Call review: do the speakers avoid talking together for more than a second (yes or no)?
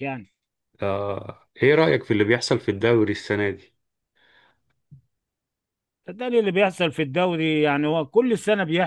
yes